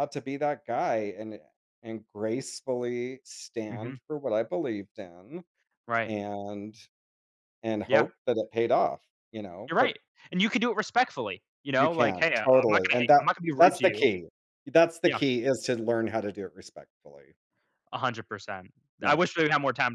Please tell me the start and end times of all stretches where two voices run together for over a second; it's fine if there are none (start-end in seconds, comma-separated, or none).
11.8-14.1